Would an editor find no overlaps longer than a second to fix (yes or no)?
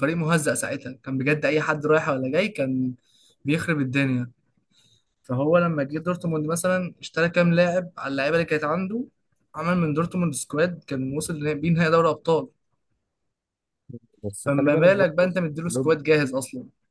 no